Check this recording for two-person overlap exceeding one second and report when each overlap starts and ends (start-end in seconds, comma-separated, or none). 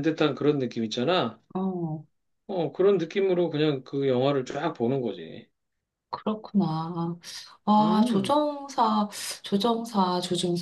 none